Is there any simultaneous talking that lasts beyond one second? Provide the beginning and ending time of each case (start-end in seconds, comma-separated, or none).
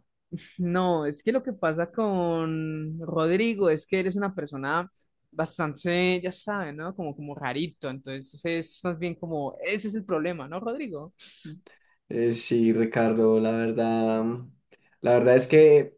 none